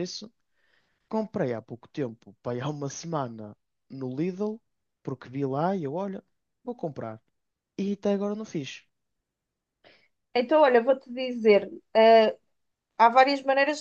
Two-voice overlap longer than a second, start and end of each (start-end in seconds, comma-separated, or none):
none